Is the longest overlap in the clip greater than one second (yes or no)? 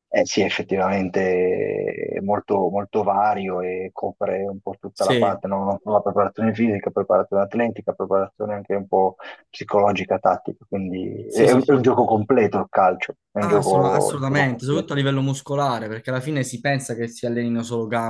yes